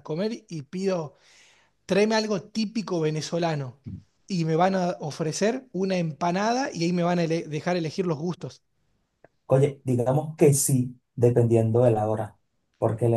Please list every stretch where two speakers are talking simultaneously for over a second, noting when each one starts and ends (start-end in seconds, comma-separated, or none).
none